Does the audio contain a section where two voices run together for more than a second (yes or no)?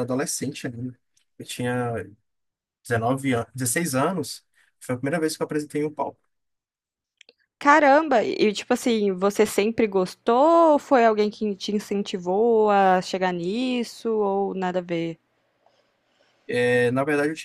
no